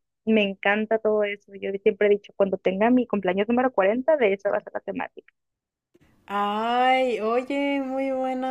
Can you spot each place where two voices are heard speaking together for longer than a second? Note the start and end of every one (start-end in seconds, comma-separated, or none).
none